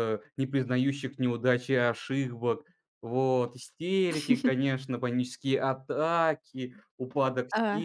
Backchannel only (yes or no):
yes